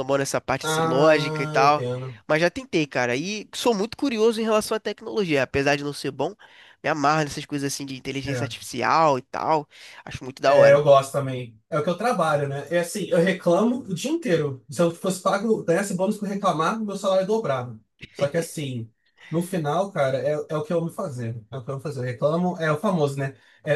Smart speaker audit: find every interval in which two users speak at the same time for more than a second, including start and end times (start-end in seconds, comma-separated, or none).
0.6-1.8